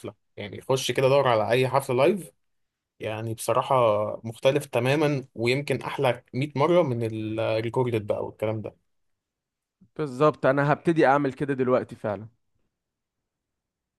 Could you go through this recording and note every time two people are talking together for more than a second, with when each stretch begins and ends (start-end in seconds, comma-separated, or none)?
none